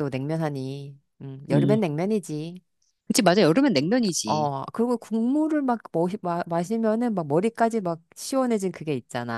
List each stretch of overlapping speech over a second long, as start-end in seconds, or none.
none